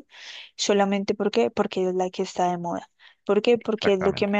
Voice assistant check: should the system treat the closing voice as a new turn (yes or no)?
no